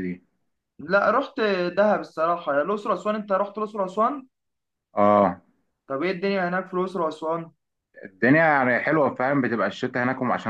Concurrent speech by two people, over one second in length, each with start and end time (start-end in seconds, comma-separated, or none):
none